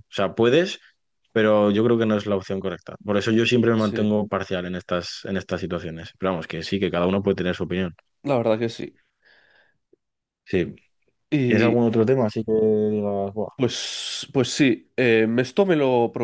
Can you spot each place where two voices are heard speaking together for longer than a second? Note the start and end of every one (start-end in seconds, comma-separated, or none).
none